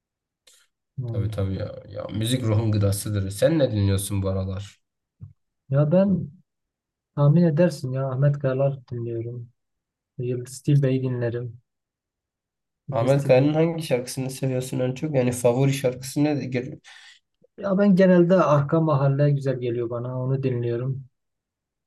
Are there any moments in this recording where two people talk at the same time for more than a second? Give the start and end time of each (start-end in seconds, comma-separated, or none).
none